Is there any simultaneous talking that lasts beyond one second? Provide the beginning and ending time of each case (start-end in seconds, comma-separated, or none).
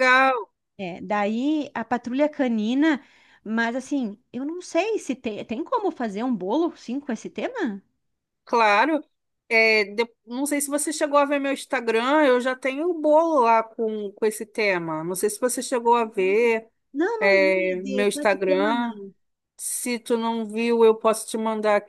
17.2-18.9